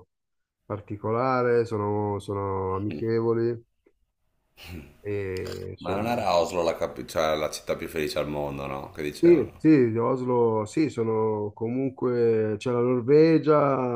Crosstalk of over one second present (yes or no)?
no